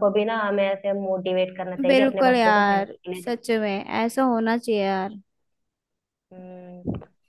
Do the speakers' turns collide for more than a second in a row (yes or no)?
yes